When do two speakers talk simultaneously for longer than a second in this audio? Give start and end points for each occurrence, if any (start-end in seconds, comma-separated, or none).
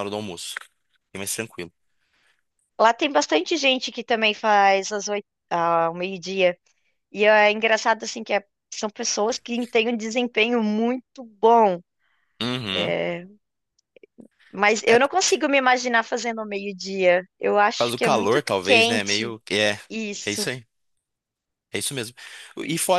17.8-19.3